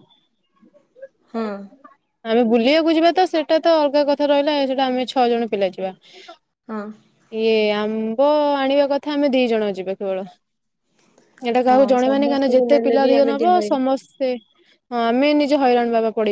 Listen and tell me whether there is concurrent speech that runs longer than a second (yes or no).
yes